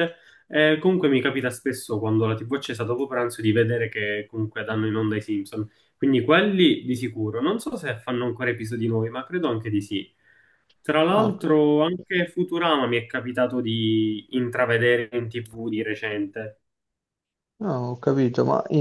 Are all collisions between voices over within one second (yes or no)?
yes